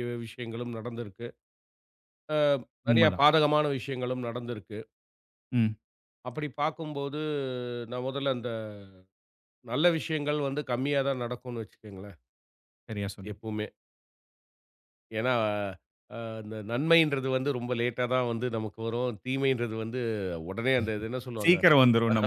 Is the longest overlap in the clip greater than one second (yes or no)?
no